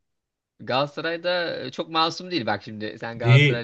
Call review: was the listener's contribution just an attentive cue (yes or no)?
no